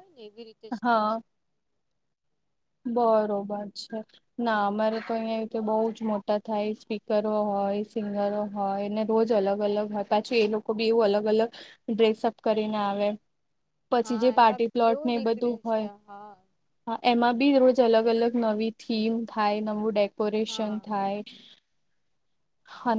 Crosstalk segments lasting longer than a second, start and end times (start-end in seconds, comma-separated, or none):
14.0-16.3